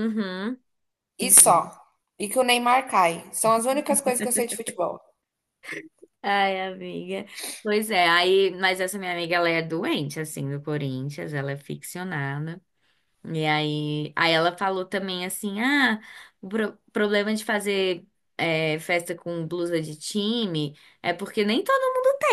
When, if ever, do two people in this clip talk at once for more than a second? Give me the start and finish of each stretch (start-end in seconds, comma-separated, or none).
none